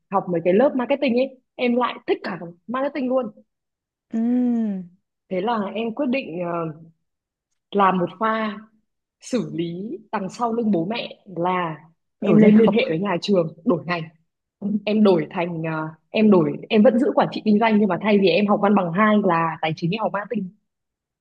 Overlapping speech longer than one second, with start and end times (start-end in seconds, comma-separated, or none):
none